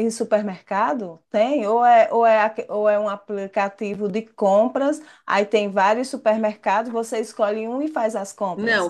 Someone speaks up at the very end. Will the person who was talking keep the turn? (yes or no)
no